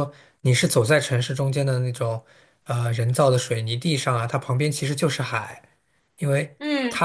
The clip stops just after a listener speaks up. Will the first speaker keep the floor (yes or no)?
yes